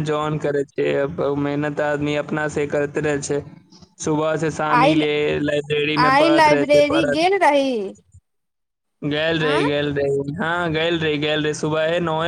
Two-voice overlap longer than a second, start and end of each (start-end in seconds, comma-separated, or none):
6.0-7.7